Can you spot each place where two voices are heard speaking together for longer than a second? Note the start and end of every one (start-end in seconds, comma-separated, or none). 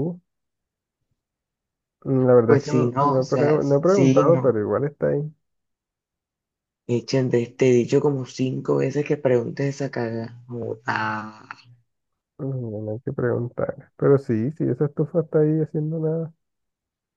2.5-4.5